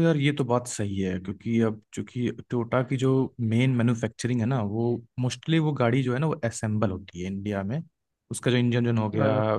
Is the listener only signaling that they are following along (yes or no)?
yes